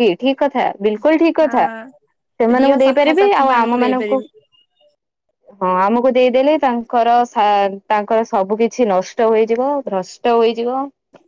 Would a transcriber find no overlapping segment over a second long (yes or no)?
no